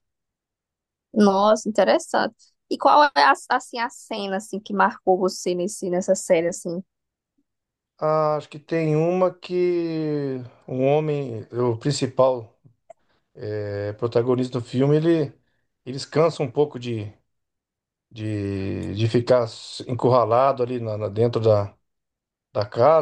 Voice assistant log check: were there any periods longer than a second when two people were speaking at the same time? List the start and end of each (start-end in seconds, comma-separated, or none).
none